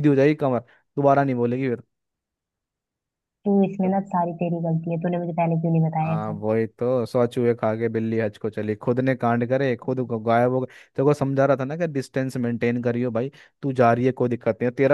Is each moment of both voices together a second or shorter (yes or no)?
yes